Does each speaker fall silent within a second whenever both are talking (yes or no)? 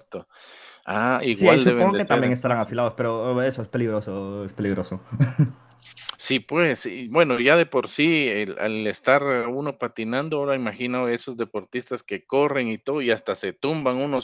no